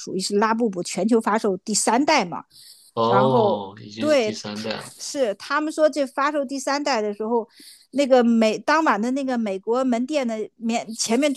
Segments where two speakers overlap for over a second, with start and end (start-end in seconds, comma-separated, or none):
3.0-4.9